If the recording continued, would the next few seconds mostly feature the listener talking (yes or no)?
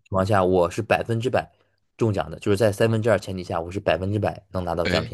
yes